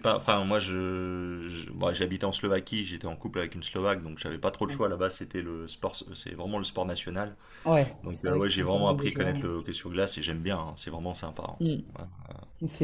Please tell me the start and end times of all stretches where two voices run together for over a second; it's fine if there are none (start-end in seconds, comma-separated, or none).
8.1-9.5